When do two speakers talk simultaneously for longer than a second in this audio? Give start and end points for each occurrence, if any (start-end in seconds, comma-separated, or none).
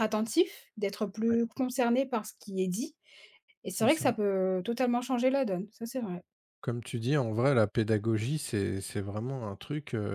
none